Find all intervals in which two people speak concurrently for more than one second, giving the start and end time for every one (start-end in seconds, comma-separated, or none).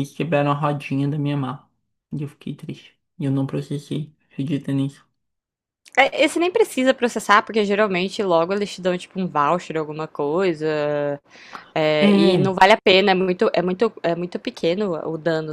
none